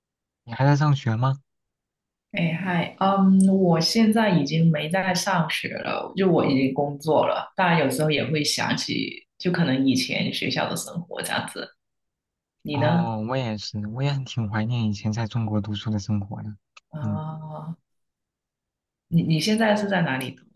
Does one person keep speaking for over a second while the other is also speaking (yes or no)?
no